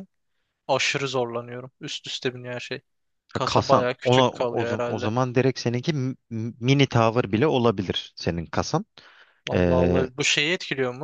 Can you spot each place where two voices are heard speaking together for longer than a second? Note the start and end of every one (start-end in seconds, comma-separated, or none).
3.4-5.1